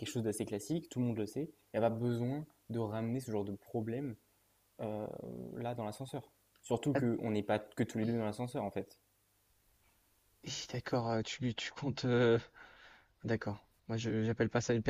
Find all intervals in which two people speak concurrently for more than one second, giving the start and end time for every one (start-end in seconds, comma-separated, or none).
none